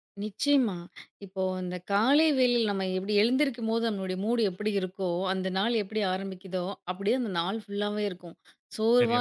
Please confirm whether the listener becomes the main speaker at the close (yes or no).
no